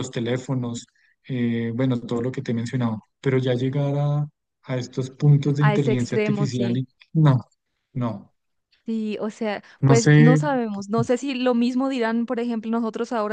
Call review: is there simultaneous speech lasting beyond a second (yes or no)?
yes